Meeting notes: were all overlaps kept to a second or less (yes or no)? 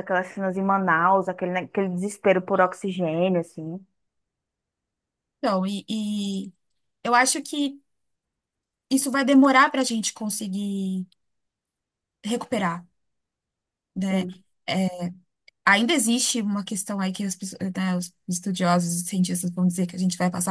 yes